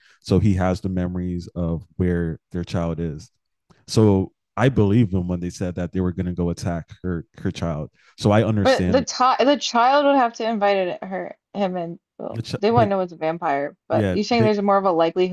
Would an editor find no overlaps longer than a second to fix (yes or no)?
yes